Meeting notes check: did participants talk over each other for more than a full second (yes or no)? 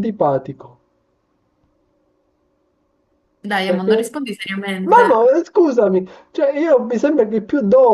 no